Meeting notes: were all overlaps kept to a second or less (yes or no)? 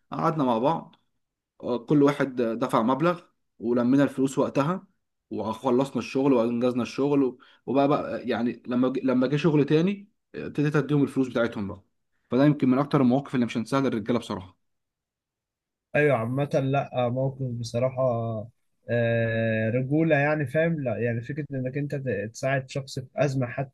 yes